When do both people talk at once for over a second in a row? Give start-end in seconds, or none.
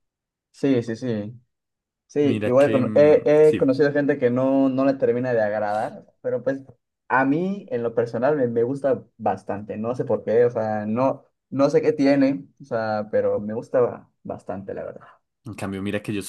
2.2-3.7